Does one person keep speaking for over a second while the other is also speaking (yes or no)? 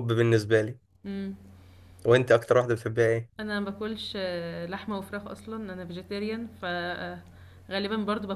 no